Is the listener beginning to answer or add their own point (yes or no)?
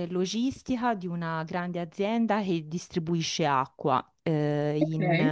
no